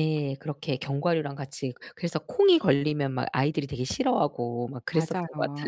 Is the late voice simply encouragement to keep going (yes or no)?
no